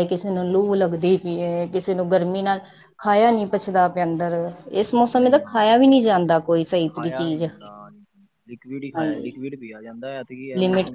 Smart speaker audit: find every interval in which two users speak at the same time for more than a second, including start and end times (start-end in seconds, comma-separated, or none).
none